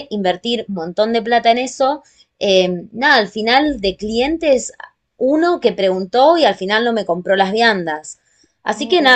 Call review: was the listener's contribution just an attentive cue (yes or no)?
yes